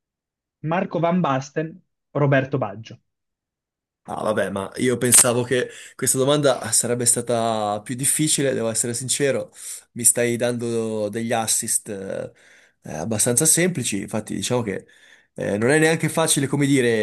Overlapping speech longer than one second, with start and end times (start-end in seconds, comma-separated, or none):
none